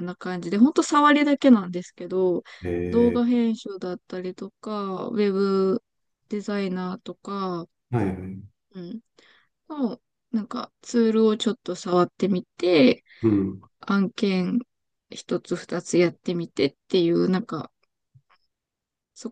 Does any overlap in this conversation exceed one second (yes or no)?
no